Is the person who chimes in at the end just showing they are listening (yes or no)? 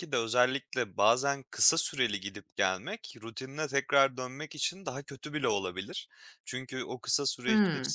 yes